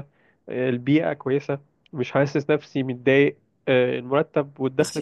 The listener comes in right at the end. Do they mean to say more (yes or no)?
yes